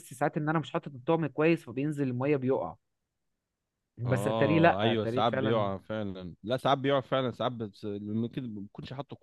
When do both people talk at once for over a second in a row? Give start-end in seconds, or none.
4.0-5.7